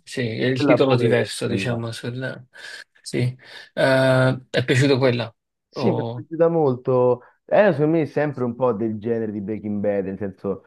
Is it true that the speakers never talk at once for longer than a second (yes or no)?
no